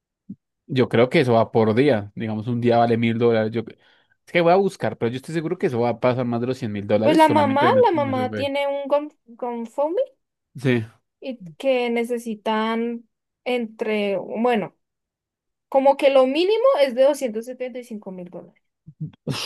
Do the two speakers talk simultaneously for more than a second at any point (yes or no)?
yes